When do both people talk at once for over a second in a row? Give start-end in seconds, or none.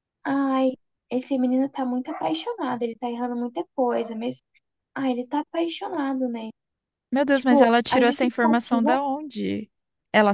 7.3-8.9